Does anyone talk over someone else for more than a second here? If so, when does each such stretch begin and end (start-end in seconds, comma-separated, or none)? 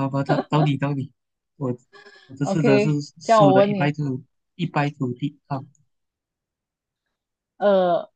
2.4-4.0